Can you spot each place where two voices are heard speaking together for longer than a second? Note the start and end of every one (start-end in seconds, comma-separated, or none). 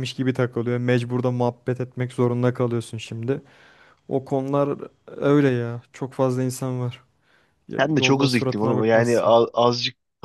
7.8-9.3